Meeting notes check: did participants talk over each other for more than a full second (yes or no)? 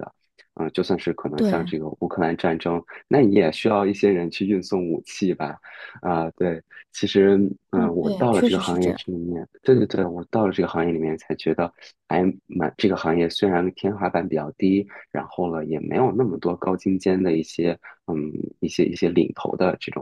yes